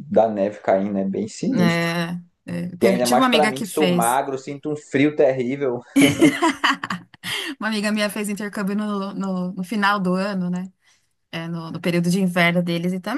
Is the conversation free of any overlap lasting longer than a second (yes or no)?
no